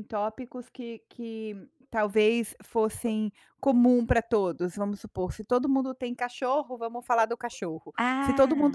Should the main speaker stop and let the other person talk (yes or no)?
no